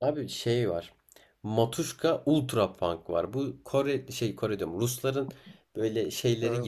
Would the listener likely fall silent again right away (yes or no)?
yes